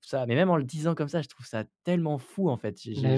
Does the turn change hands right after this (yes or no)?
no